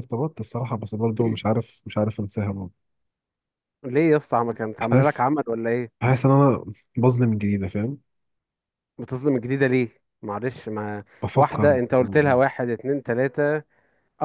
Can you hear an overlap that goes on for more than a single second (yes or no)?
no